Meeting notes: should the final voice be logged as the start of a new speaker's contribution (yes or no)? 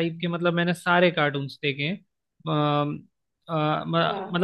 no